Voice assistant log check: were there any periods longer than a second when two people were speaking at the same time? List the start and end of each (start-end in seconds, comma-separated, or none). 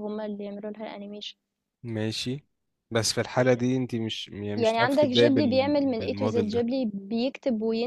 4.5-6.7